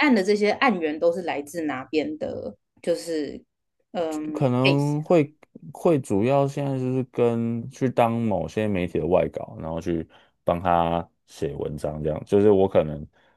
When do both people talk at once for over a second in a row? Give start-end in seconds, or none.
none